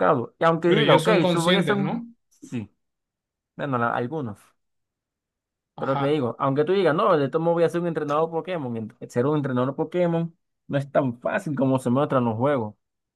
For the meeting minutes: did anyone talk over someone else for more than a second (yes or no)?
yes